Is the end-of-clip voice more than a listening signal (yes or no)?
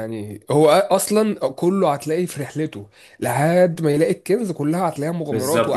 yes